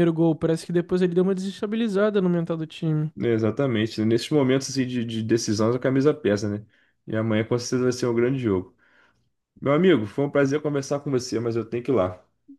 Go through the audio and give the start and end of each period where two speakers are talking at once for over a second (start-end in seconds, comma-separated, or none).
none